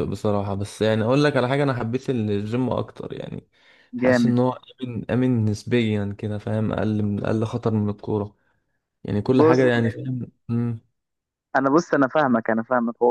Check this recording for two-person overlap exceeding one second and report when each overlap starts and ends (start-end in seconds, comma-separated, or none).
none